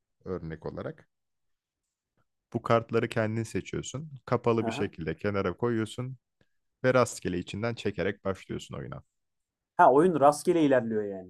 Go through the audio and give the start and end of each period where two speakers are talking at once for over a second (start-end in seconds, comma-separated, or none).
none